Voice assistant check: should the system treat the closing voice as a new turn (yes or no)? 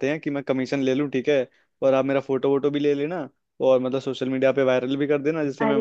yes